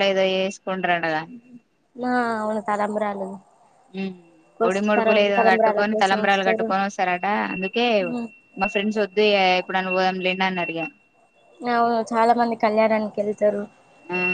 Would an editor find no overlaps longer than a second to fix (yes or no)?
no